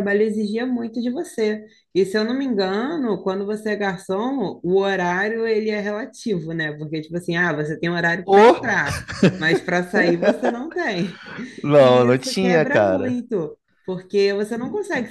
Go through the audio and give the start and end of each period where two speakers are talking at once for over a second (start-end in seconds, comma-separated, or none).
11.8-13.2